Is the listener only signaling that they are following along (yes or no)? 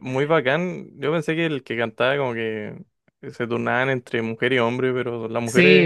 no